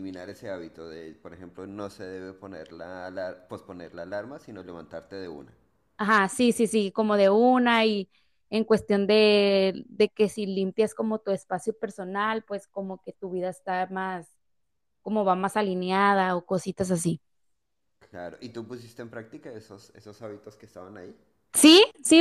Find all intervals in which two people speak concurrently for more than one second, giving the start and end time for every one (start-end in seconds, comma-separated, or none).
none